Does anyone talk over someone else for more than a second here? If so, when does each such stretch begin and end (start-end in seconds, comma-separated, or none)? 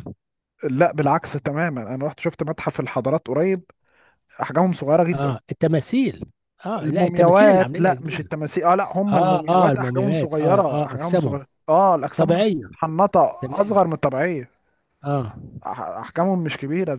6.8-8.3, 9.1-11.4